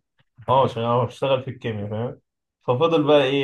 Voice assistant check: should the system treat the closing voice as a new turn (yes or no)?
no